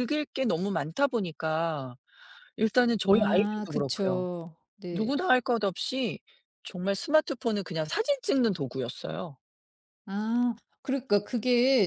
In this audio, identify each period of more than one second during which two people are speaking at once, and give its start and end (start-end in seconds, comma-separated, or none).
3.1-4.3